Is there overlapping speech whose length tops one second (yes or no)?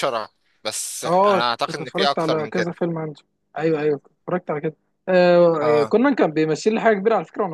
yes